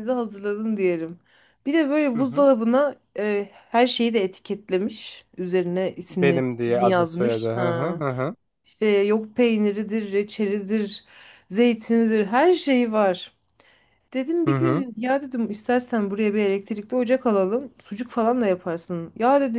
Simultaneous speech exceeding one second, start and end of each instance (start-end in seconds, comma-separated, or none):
6.1-8.0